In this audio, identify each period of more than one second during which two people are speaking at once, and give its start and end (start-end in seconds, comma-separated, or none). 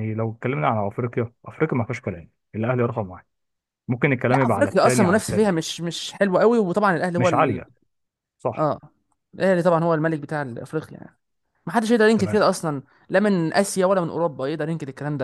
4.3-5.7